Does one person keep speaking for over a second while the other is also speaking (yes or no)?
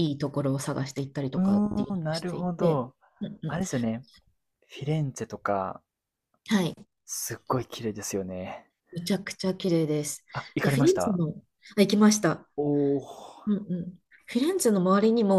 yes